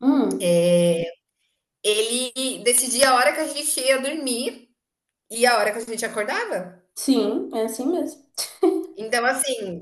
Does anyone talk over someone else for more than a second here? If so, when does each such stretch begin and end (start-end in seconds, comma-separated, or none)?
none